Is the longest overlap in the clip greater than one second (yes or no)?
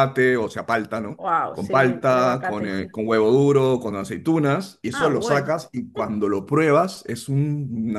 yes